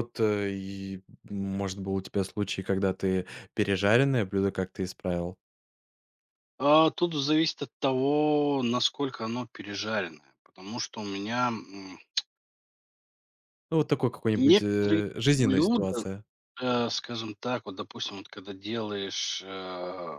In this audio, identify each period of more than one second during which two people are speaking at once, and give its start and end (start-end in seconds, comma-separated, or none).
14.3-16.0